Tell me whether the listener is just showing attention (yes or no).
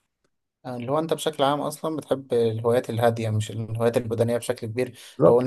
yes